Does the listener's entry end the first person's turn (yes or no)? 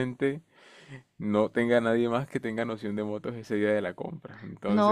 yes